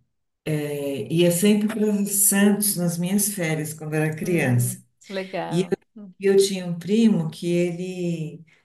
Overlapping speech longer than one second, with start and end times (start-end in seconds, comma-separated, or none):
none